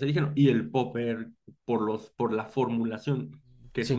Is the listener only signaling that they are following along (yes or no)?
yes